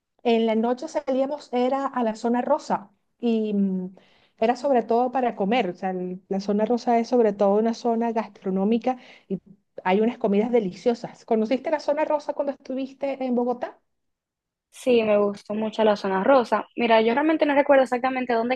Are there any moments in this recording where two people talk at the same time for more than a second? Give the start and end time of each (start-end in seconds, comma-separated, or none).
none